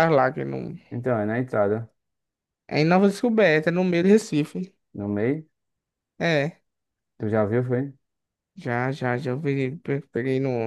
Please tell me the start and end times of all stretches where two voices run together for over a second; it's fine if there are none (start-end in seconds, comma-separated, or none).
none